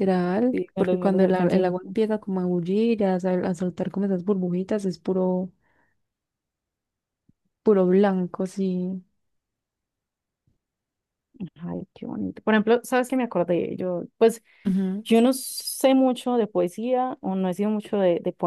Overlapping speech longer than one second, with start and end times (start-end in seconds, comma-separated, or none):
0.5-1.9